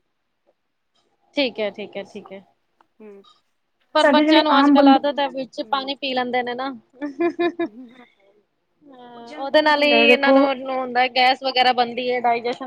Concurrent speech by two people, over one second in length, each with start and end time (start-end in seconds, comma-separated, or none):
4.0-6.1, 9.2-10.4